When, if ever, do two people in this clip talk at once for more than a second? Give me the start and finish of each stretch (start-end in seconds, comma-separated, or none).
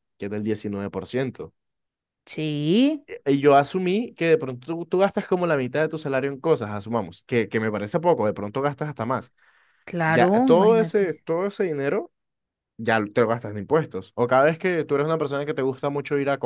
10.0-11.2